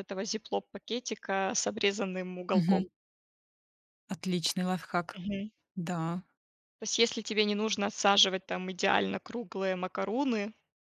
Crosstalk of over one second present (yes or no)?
no